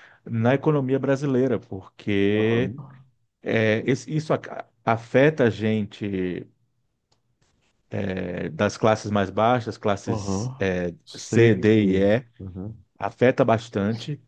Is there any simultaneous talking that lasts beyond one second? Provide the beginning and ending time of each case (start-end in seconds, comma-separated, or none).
10.1-11.5